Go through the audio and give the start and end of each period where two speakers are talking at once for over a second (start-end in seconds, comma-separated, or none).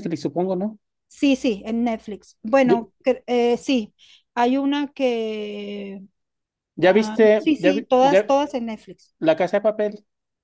6.8-8.3